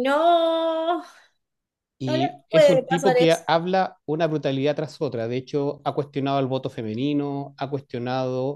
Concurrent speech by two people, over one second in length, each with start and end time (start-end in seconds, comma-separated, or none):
2.0-3.4